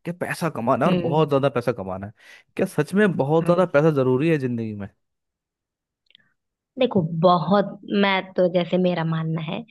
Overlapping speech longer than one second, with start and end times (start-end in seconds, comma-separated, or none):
none